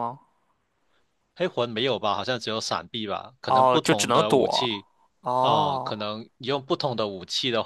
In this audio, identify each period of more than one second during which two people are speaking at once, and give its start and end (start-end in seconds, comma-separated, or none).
3.5-4.7